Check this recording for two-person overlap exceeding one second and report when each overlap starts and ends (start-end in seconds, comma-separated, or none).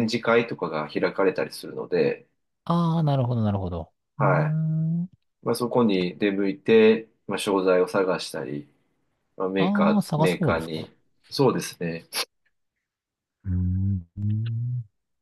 9.6-10.9